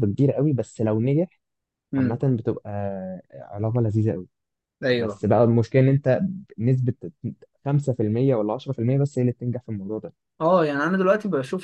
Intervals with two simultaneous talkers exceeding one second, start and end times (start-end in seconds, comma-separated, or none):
none